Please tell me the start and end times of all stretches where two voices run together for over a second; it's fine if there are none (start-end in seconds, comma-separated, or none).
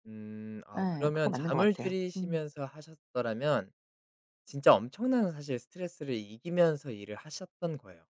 0.8-2.4